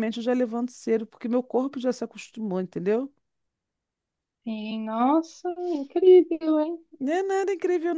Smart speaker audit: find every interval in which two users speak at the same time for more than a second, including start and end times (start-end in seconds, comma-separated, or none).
none